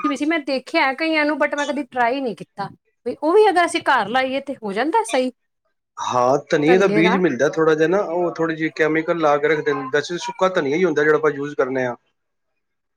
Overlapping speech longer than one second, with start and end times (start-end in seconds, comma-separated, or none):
none